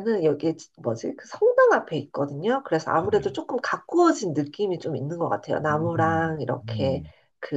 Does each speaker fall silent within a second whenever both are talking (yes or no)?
no